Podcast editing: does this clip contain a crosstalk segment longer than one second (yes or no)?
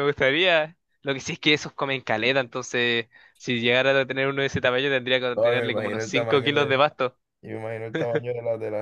yes